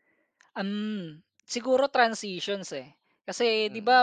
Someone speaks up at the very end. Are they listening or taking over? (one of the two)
listening